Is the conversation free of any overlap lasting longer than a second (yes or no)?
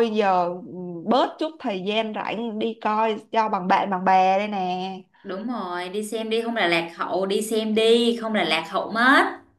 yes